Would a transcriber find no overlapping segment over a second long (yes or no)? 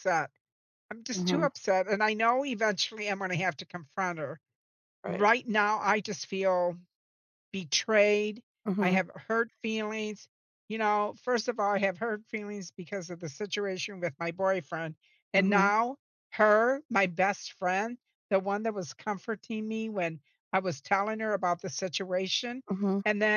yes